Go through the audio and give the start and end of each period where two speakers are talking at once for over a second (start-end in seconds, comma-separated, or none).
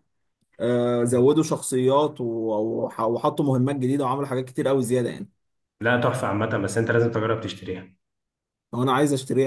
none